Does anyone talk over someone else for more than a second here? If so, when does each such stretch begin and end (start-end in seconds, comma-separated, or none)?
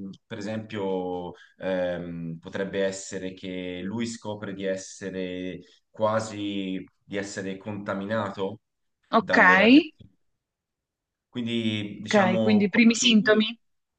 12.0-13.5